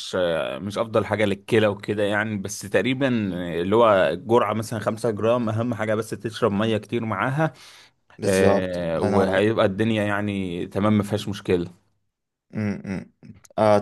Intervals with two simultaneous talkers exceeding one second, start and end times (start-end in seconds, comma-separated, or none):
8.2-9.5